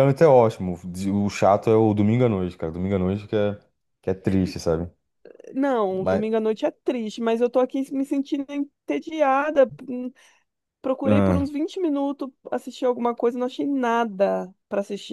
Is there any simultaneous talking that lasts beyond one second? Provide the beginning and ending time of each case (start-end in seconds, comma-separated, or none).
none